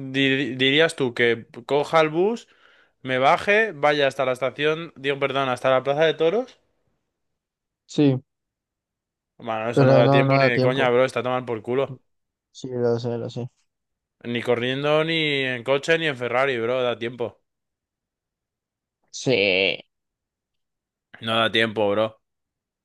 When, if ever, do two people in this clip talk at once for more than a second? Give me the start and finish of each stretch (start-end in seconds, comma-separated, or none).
9.7-10.9